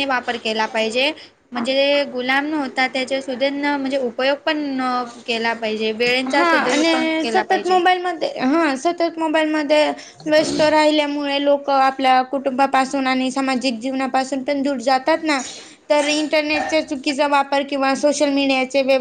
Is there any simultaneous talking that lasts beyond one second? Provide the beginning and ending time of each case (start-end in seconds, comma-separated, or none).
6.3-7.8